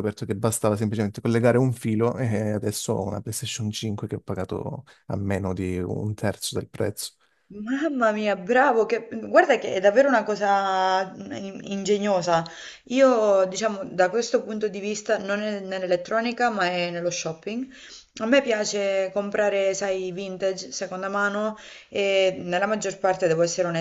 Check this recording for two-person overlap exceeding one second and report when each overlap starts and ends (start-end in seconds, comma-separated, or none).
none